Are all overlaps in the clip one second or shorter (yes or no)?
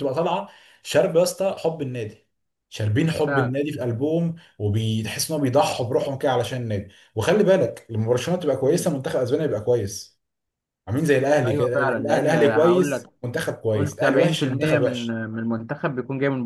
no